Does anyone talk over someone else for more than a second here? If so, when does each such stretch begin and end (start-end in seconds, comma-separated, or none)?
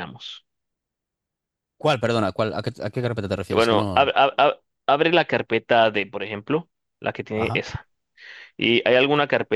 none